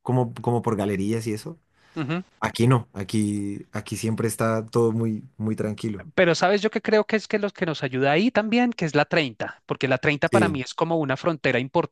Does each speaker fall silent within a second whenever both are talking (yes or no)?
yes